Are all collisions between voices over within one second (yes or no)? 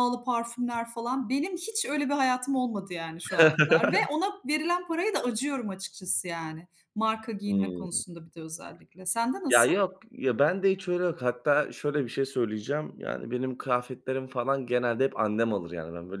yes